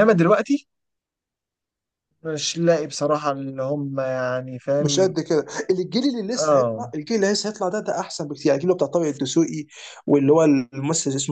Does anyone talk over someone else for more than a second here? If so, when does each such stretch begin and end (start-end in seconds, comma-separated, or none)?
none